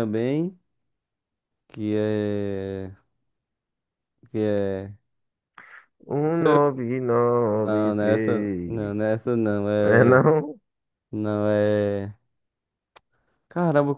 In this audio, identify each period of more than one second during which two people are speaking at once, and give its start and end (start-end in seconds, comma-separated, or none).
7.5-8.9